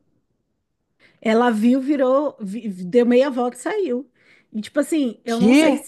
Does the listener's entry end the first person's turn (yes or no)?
no